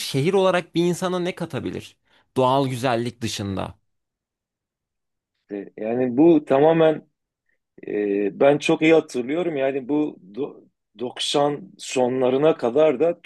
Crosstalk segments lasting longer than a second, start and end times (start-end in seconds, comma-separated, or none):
none